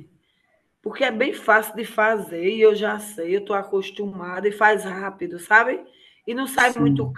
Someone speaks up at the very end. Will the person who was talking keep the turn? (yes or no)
yes